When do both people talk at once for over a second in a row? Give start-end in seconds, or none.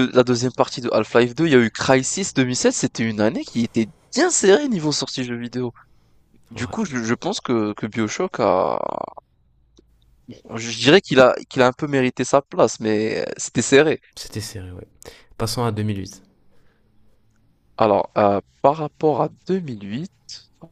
none